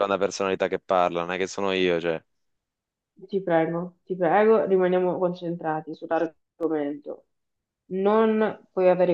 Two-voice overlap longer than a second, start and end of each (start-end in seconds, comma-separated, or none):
none